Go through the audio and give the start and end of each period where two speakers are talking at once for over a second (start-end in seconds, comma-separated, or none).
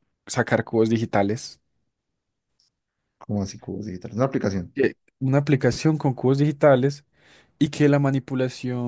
none